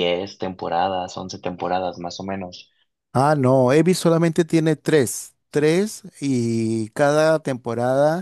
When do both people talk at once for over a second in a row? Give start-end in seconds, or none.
none